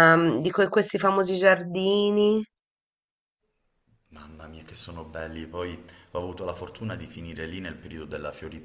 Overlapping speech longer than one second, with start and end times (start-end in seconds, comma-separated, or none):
none